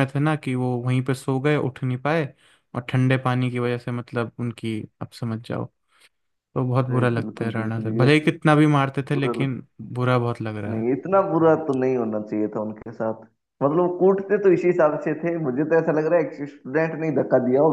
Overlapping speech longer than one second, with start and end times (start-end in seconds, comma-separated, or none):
6.9-8.3